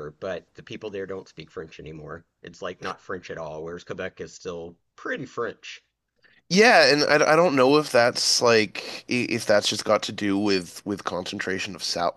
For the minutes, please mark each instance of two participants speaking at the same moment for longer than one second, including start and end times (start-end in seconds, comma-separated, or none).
none